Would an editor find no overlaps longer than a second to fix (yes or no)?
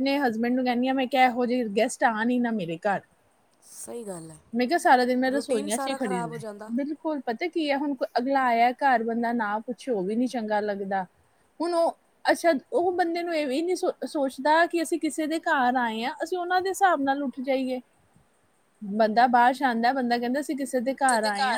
no